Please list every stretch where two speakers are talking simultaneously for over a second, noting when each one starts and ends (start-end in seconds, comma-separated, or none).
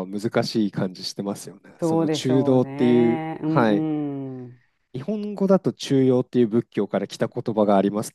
1.8-3.6